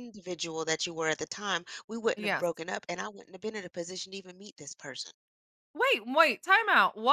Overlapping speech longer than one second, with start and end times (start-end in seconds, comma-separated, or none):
none